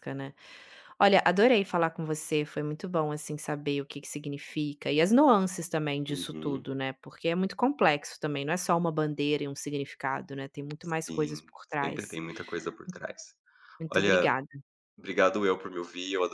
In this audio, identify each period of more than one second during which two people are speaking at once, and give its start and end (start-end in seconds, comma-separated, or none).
10.8-12.2